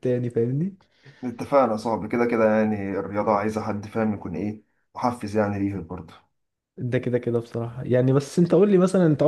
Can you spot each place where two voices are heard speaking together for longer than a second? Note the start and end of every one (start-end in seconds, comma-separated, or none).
none